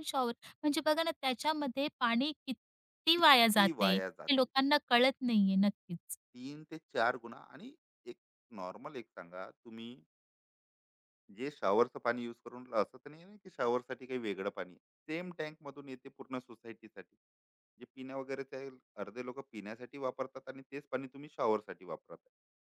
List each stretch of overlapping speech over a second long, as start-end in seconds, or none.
3.1-4.5